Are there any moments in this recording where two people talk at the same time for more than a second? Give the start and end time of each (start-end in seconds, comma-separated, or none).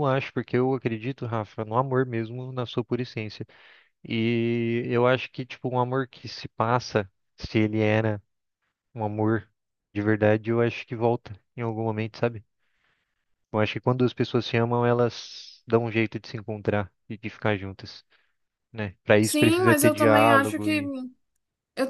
19.2-20.8